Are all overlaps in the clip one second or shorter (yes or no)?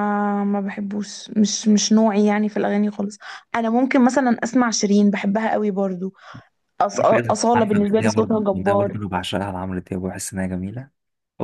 no